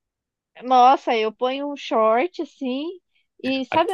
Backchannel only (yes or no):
yes